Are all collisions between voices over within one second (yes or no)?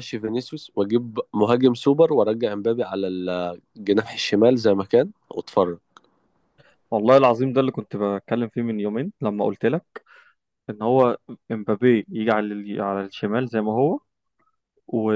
yes